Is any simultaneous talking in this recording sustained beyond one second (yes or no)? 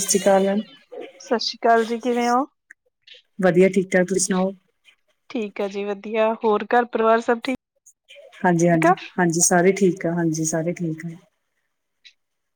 no